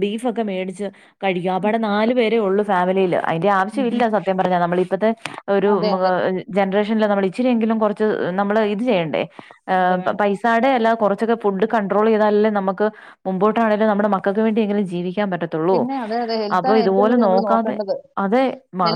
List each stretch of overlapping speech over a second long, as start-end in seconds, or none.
15.7-17.8